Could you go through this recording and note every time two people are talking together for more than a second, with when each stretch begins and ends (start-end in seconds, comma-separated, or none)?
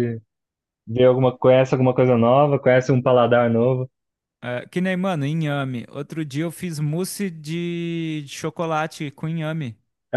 none